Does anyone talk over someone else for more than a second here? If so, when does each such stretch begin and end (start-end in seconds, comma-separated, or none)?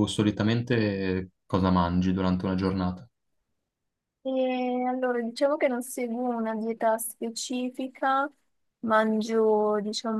none